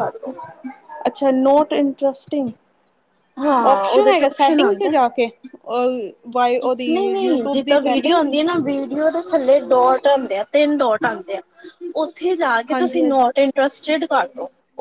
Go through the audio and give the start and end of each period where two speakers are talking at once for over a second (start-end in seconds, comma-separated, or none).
3.6-5.0